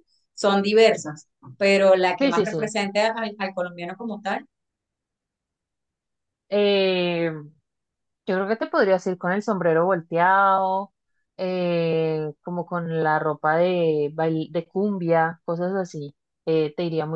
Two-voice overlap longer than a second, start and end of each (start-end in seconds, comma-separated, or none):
none